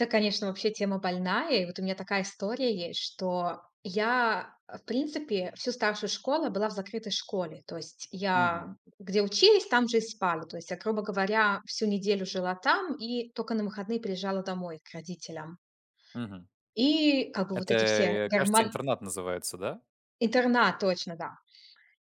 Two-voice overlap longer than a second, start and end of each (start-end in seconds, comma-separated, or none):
17.5-18.7